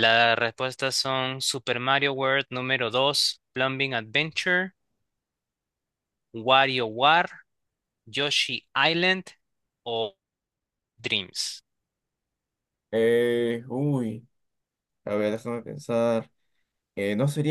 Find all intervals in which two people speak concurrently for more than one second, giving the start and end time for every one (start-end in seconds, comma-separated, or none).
none